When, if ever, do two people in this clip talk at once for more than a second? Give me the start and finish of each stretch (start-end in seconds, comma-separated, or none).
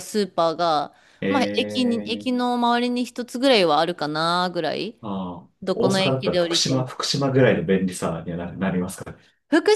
5.6-7.0